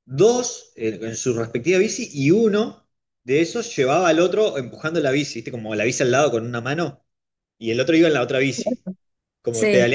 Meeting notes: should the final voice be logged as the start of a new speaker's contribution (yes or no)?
no